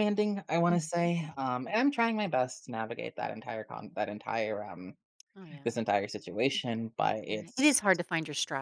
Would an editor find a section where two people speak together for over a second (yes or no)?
no